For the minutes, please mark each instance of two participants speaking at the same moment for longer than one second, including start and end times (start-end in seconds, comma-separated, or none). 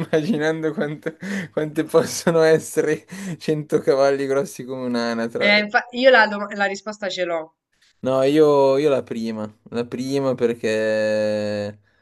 none